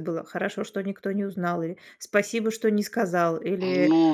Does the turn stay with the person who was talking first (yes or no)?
no